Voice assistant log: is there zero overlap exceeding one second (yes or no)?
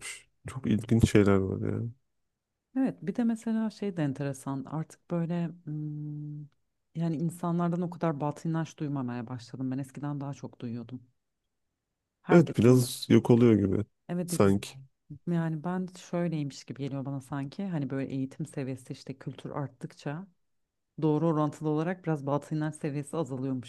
yes